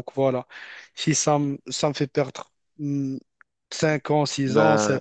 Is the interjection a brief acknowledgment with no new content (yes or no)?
yes